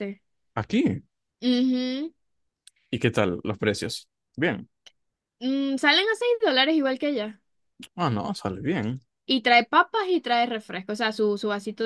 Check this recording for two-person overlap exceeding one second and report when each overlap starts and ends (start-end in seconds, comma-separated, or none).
none